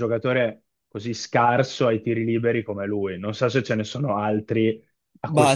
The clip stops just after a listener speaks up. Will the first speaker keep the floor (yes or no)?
no